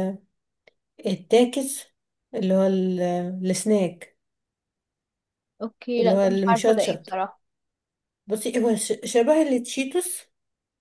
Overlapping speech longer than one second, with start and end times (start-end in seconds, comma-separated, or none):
6.0-7.2